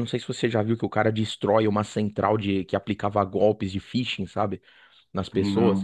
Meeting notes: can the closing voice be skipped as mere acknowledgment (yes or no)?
yes